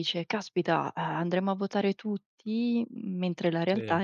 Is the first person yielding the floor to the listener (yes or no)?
no